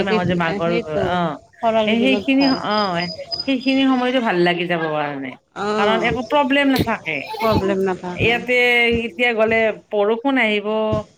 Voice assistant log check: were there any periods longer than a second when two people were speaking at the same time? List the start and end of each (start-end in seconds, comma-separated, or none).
none